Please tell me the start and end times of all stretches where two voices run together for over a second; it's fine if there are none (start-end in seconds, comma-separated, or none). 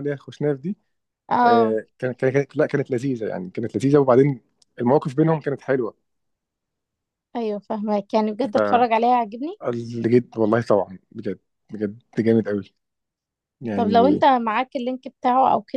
none